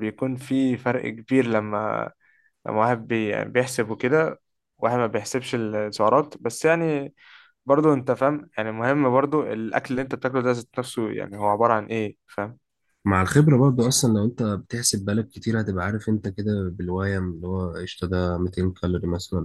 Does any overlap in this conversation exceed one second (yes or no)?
no